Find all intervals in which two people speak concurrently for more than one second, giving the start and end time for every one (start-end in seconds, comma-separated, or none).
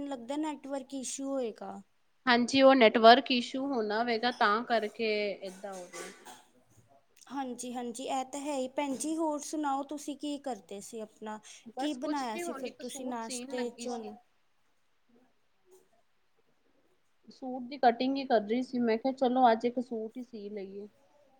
11.8-14.1